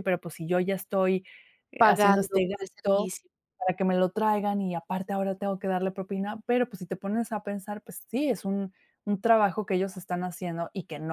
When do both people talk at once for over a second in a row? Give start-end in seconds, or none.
1.8-3.1